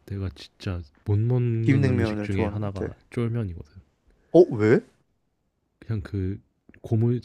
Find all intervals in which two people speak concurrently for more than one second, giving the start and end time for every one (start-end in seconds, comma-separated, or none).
1.7-3.0